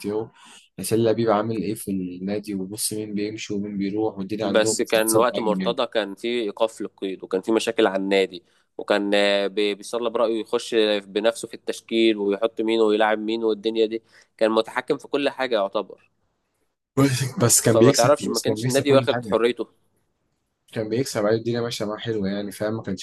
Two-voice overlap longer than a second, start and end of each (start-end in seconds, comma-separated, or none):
4.4-5.8, 17.6-19.4